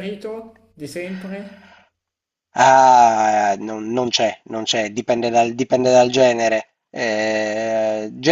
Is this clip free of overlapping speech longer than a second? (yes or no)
yes